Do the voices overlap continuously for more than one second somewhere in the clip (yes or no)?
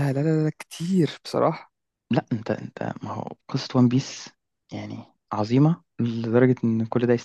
no